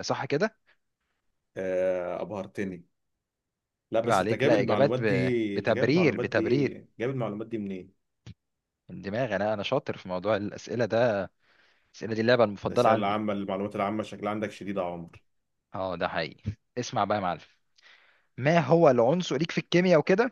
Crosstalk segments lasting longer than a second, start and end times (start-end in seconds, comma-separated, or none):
4.0-6.8